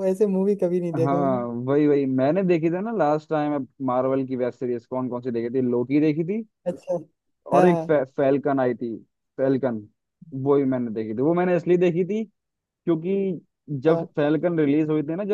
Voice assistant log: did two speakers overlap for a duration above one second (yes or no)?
no